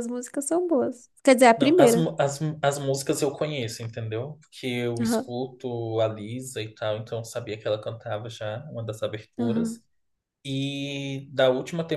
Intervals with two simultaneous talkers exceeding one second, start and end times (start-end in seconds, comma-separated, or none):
none